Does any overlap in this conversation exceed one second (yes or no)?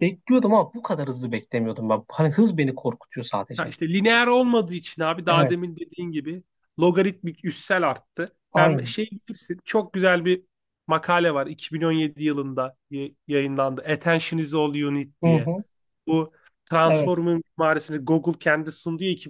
no